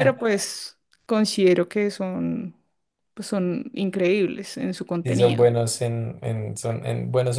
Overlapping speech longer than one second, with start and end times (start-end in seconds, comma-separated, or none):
none